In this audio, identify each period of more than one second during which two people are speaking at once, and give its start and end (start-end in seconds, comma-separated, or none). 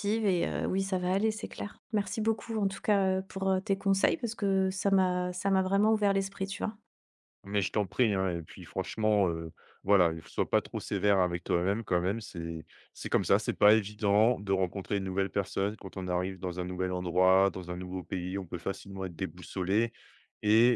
none